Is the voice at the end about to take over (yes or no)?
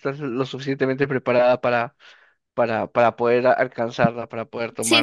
yes